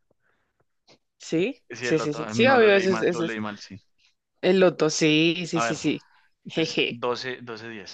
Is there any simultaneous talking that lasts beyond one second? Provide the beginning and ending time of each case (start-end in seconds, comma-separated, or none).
1.7-3.4